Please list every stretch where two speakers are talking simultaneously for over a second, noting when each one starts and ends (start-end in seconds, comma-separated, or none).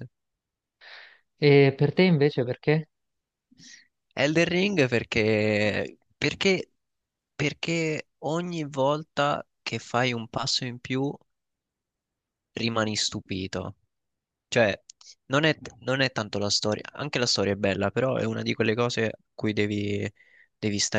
none